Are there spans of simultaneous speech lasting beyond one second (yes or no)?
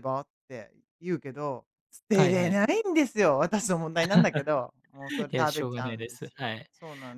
yes